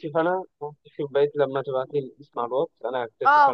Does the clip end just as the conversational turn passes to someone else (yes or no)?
yes